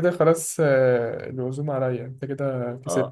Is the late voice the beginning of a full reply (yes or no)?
yes